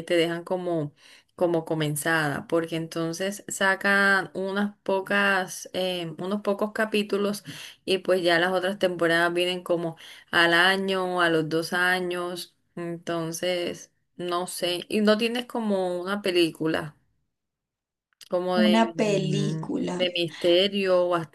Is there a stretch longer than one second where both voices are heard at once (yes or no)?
yes